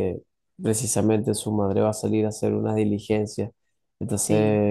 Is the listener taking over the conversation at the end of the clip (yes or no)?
no